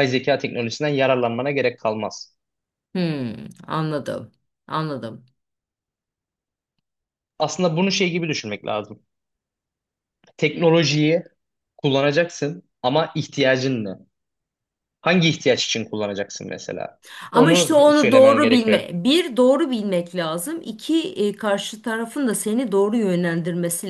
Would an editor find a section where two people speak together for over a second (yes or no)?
yes